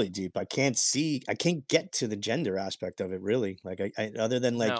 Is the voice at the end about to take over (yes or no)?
no